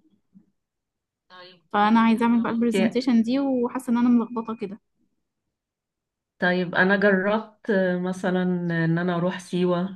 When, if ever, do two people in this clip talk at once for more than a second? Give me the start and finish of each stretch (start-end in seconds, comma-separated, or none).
1.7-3.0